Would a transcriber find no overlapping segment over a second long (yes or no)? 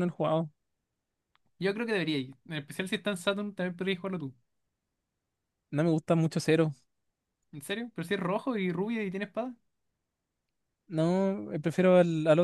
yes